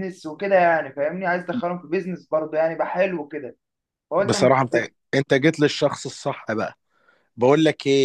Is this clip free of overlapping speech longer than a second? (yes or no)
yes